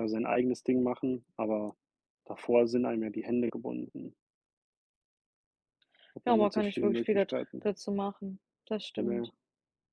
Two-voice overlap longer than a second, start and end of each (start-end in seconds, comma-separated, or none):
6.2-7.7